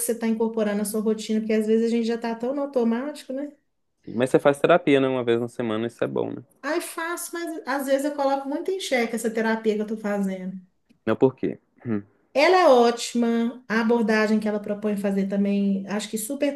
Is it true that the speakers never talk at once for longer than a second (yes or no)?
yes